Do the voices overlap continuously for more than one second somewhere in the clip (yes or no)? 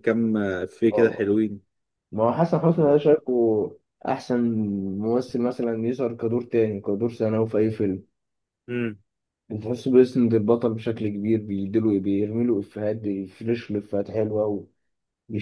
no